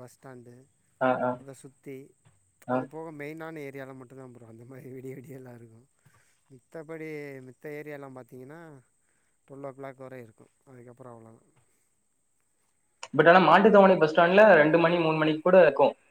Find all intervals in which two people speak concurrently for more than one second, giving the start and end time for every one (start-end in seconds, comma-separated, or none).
none